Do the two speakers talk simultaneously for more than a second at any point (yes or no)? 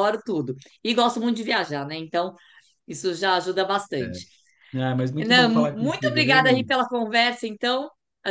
yes